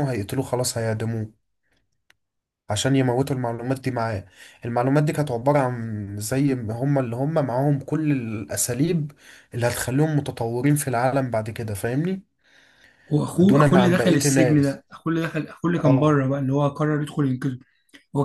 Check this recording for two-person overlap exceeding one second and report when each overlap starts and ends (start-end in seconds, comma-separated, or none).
13.4-14.8